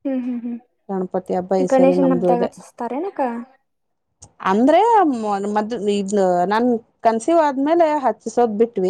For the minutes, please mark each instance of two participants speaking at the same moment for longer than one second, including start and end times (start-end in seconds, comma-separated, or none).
0.9-2.5